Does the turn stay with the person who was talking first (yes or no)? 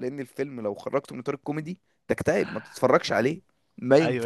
no